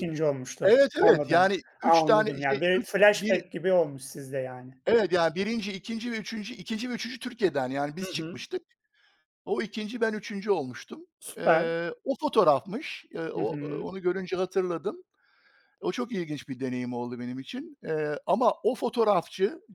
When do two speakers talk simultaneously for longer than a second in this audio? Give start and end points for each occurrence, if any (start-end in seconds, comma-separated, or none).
0.6-3.4